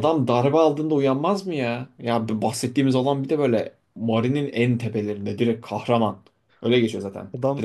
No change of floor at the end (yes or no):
no